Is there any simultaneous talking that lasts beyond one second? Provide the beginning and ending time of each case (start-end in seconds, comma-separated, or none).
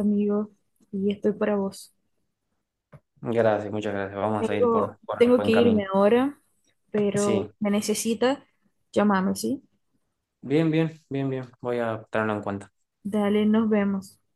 4.4-5.8